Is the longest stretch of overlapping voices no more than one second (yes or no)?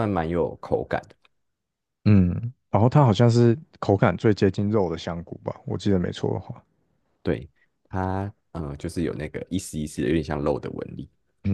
yes